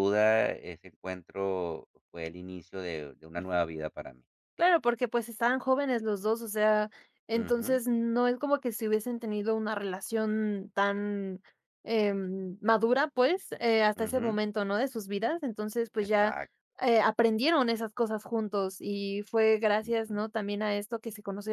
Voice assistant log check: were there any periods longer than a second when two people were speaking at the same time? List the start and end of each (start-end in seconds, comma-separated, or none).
none